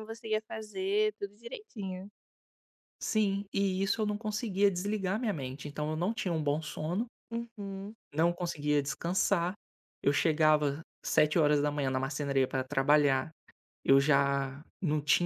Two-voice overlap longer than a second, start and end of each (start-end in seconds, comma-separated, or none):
none